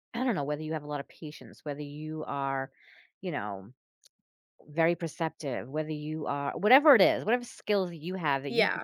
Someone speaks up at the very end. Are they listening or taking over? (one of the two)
listening